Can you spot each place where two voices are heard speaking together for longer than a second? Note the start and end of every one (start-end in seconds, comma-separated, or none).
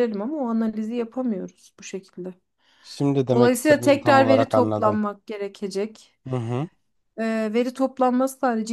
3.3-5.0